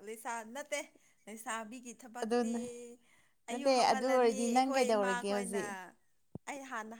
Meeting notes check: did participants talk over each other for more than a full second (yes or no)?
yes